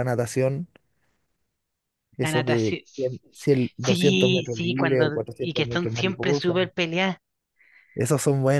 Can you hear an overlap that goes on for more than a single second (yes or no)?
yes